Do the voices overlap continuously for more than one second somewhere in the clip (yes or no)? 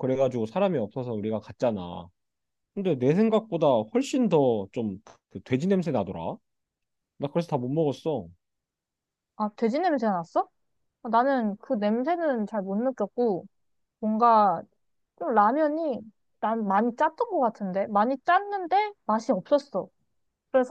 no